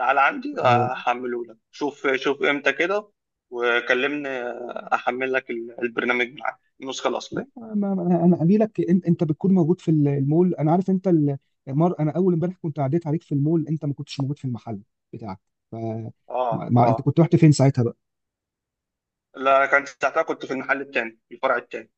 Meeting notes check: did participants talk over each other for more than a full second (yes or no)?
no